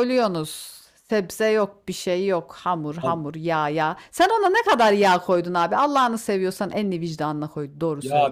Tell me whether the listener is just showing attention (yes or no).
no